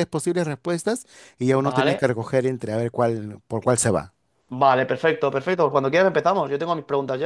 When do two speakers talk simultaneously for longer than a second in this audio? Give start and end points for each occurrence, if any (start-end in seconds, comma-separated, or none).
none